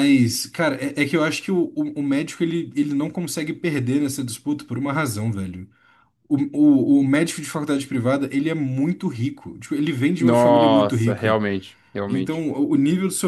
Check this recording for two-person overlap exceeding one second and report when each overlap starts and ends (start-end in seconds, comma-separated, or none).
10.2-11.4